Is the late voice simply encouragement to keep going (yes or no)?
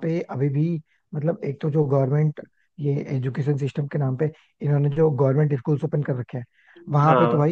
yes